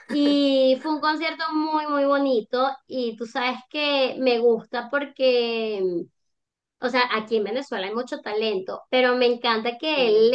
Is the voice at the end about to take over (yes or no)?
no